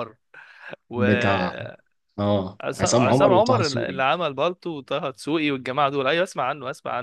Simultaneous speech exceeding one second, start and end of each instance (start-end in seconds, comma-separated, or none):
2.6-4.0